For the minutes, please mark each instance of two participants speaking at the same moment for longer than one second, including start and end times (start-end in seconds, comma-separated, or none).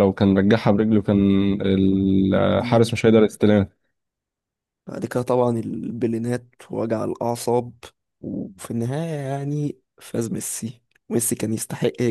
none